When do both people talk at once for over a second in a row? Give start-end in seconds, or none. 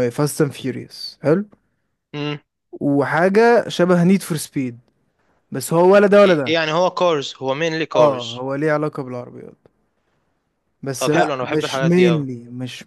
11.0-12.3